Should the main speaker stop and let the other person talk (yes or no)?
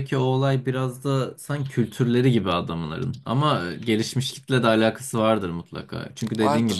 no